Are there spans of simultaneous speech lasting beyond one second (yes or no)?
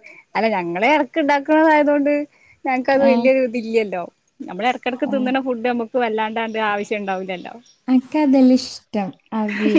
no